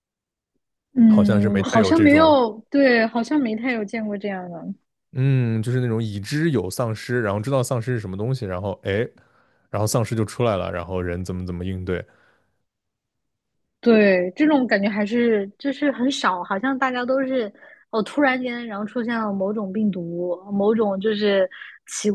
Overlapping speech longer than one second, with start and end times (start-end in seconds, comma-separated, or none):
1.1-2.4